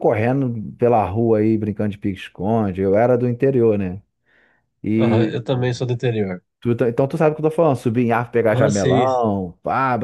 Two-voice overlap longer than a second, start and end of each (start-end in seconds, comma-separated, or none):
none